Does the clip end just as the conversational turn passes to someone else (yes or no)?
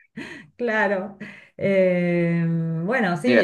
yes